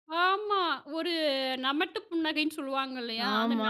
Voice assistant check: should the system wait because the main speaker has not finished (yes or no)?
yes